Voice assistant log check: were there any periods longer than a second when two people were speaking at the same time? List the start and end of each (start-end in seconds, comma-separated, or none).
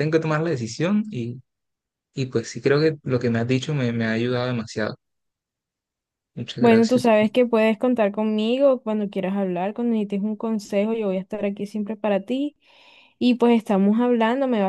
none